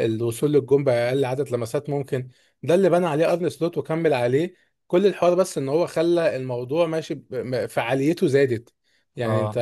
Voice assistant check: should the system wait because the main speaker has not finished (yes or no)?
yes